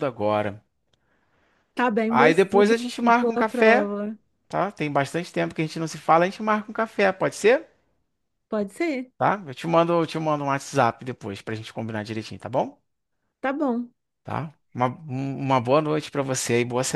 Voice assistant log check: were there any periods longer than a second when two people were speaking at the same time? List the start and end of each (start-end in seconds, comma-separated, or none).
2.1-3.9